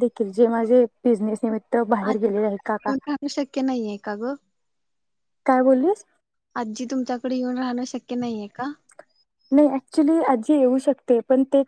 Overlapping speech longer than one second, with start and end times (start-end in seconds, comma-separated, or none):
none